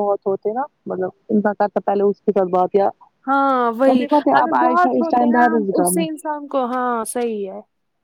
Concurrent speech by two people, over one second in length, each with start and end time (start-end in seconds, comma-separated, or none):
3.9-6.0